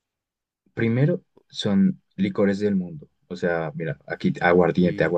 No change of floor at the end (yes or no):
yes